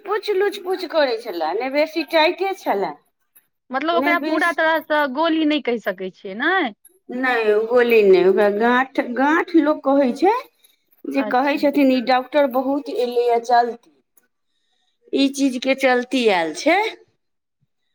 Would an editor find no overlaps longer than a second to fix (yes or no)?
yes